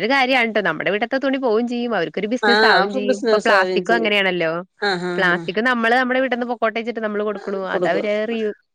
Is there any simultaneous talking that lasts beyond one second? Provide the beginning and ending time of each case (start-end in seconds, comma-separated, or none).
2.5-4.1